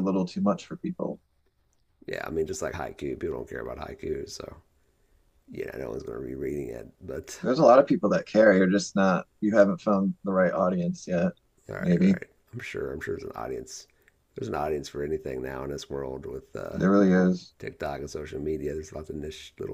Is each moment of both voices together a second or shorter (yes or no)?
yes